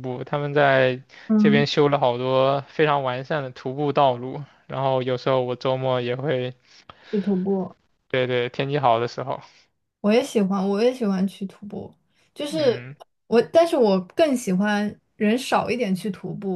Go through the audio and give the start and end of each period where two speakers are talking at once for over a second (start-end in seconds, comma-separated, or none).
none